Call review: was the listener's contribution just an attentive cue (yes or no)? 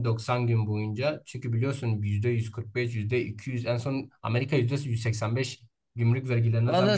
no